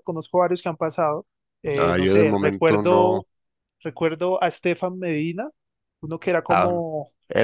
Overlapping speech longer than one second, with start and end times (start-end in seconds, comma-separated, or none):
1.8-3.2